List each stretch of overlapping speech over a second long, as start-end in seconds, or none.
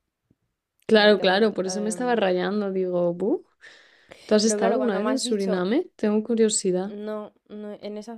1.0-2.4, 4.4-5.7